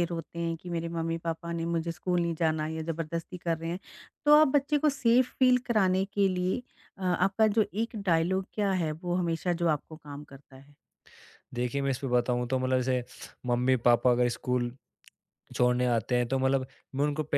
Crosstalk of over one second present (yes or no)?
no